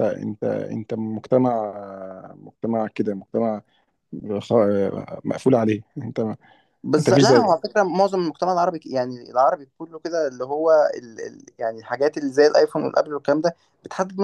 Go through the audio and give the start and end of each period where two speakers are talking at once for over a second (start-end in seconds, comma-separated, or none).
none